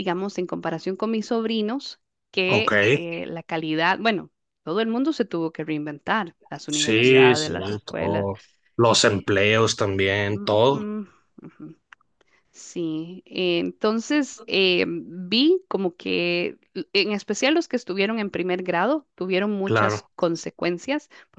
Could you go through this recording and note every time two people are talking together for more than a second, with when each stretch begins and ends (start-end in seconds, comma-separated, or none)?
6.7-8.3